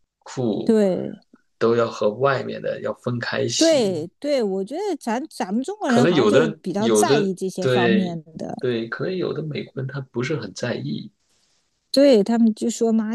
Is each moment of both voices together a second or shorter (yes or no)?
no